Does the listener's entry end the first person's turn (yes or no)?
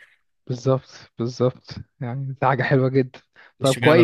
yes